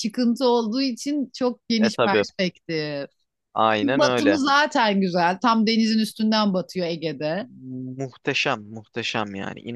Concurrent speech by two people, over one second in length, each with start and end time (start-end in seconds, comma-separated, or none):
none